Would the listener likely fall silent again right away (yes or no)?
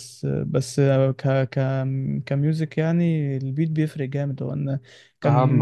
yes